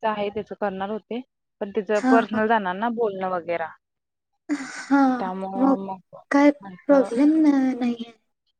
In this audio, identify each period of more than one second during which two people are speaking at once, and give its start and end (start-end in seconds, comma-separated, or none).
none